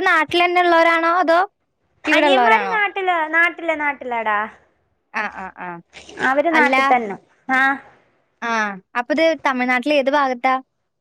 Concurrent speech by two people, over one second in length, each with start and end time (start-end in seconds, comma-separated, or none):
none